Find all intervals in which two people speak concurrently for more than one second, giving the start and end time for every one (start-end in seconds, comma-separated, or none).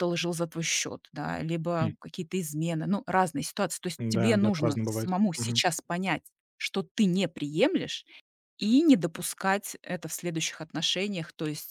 4.0-5.6